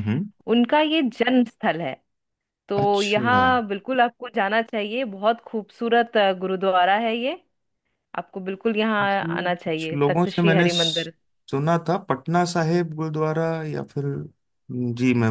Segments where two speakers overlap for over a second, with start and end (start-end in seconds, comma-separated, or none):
9.0-11.1